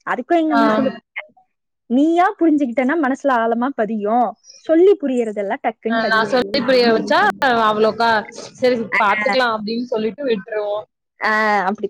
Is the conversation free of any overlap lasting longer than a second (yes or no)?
yes